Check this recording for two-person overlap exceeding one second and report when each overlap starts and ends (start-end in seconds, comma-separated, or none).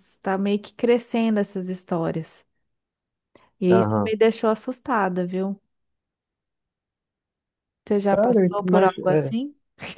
8.1-9.3